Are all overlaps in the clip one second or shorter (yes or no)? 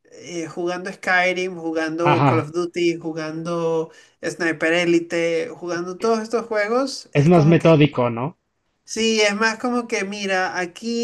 yes